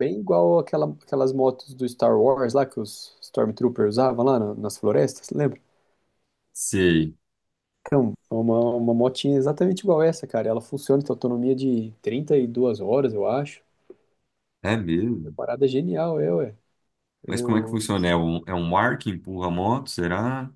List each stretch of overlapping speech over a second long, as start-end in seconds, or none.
none